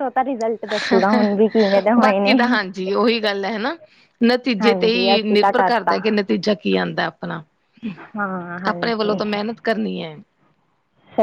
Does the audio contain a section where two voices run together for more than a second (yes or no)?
yes